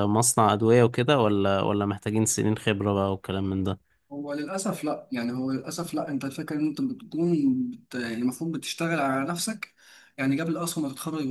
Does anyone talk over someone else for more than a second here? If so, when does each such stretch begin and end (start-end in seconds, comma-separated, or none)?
none